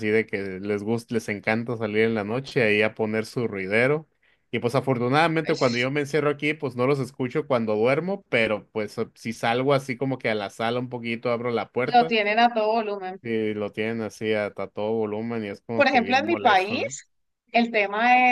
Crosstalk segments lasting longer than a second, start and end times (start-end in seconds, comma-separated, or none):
15.7-17.0